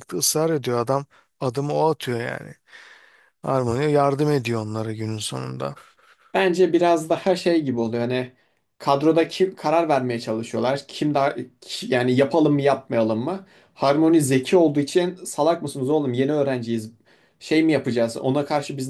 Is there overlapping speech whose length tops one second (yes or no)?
no